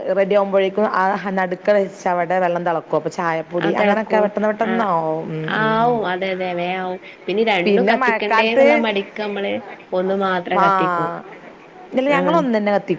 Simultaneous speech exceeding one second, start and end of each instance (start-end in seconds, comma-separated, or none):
none